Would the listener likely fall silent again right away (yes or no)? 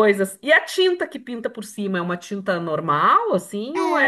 no